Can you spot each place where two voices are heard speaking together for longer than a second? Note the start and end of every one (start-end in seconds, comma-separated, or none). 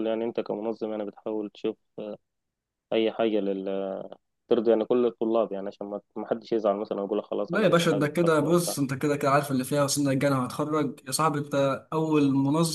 7.5-8.8